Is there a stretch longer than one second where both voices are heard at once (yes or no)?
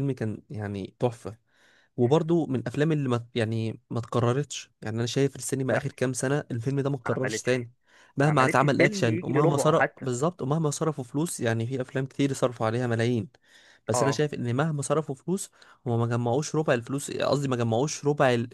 yes